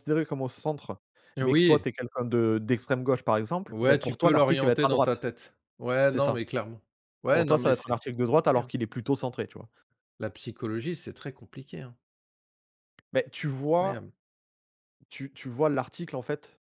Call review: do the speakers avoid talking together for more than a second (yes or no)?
no